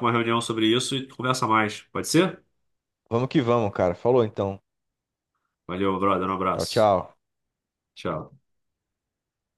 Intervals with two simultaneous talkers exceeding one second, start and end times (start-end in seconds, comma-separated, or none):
none